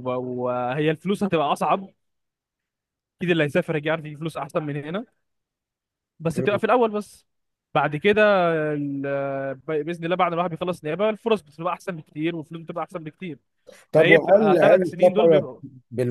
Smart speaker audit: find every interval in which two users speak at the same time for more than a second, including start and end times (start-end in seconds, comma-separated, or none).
13.9-15.4